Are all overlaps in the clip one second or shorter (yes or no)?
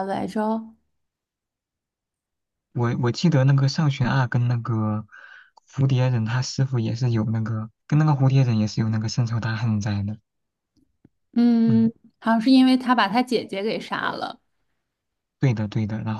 yes